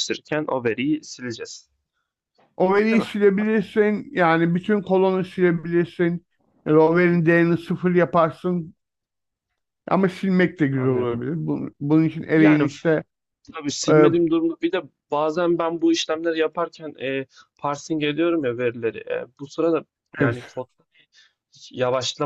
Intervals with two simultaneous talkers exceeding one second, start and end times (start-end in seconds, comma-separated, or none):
none